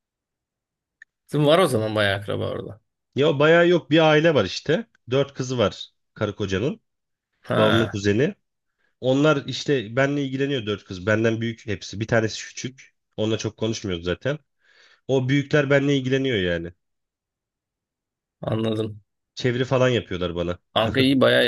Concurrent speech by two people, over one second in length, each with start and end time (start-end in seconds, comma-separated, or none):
none